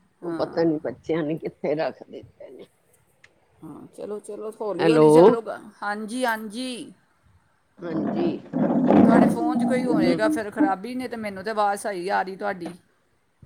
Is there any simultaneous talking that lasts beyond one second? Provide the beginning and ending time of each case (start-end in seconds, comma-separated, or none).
none